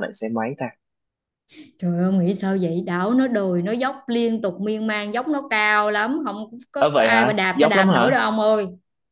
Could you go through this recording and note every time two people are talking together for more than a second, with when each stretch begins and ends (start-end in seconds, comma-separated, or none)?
6.8-8.2